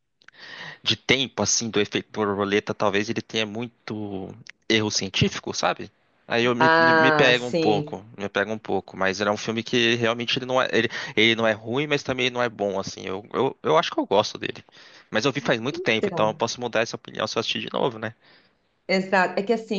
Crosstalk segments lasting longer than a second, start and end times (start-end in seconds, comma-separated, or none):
6.6-8.0